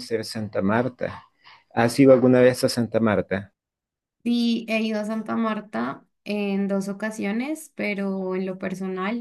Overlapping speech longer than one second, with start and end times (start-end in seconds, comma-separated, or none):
none